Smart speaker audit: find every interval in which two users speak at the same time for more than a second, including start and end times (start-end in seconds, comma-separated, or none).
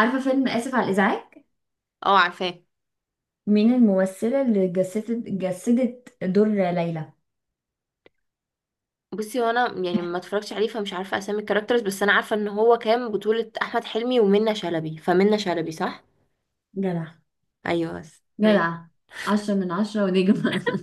none